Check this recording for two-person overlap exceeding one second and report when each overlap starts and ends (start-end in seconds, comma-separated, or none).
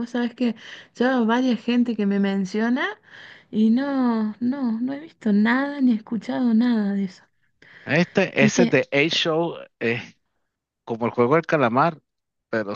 none